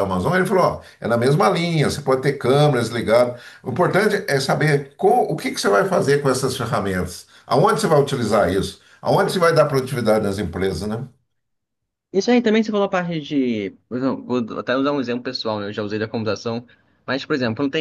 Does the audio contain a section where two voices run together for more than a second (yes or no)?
no